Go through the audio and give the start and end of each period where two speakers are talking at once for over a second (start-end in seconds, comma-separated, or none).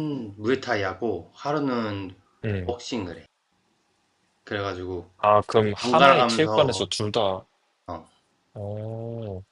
5.5-6.8